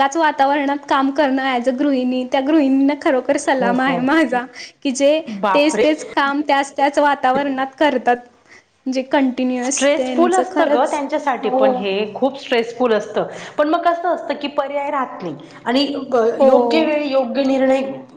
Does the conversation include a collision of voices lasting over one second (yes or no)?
no